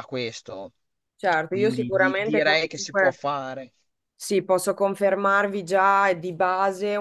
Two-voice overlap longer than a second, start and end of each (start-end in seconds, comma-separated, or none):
1.5-3.2